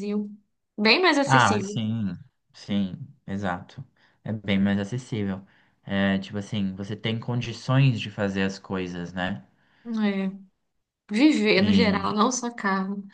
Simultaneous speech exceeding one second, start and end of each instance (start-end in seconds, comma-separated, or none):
none